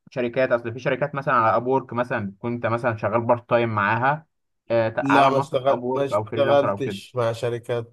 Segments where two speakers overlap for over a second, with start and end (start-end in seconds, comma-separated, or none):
5.0-7.0